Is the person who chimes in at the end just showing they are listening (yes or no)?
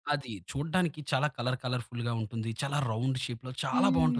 no